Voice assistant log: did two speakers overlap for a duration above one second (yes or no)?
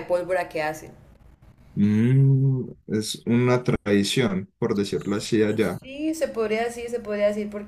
no